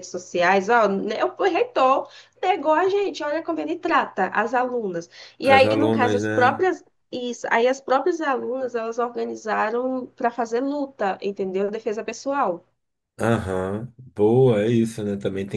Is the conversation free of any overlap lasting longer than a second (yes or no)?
no